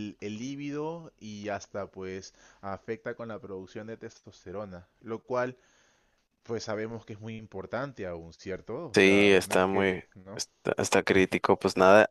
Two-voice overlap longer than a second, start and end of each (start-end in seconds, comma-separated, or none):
8.9-10.4